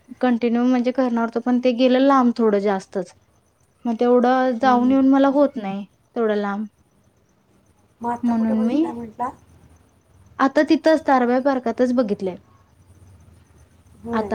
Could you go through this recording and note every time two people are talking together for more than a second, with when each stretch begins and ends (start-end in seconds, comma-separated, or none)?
none